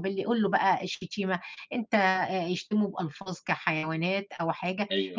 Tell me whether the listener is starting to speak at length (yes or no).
no